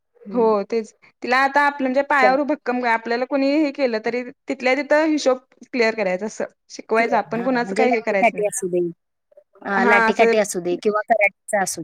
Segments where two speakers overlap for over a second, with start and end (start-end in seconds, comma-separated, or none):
7.4-8.6